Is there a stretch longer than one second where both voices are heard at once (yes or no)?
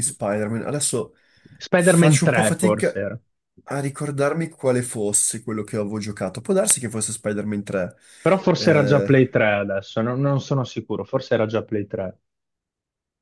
yes